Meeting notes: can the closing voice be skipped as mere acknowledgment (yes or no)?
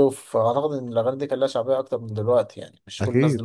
yes